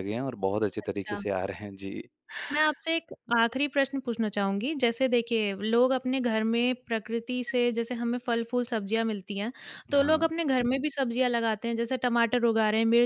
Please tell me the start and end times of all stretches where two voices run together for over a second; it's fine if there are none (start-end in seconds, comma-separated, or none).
none